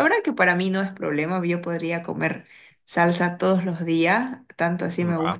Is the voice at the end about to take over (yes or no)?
no